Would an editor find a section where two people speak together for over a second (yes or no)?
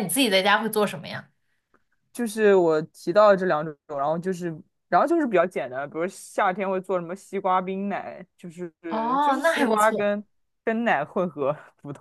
yes